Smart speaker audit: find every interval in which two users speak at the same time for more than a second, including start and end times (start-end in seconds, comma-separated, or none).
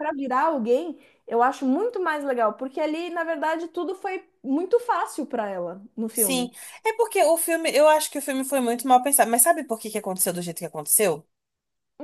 none